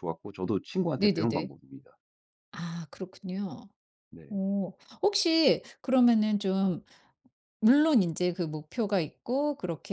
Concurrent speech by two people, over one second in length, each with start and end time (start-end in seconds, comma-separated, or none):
none